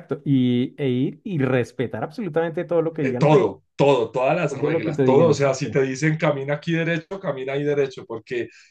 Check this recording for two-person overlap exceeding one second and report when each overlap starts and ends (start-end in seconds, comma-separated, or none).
4.5-5.8